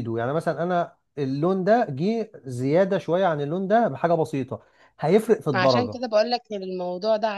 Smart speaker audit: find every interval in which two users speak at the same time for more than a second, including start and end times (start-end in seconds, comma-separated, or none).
none